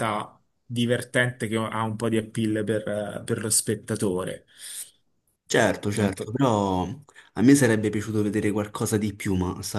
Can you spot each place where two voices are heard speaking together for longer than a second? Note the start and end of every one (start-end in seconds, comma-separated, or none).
none